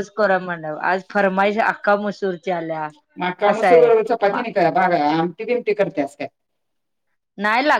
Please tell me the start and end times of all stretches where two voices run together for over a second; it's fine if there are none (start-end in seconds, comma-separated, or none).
none